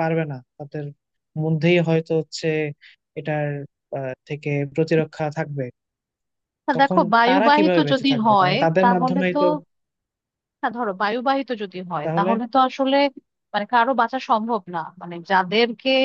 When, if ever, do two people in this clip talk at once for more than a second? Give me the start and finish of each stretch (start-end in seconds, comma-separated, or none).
6.8-9.4